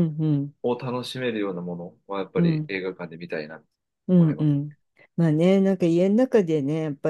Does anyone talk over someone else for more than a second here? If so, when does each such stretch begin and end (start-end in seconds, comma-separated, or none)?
none